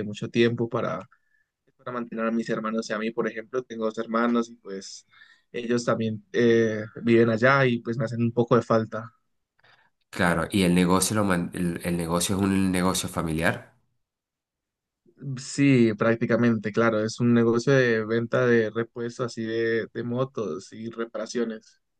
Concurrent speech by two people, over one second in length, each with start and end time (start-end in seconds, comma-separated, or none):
none